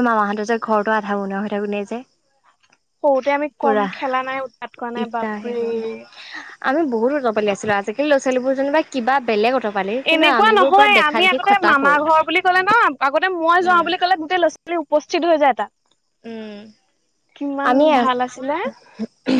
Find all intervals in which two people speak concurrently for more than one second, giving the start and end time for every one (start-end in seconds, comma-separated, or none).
10.1-12.0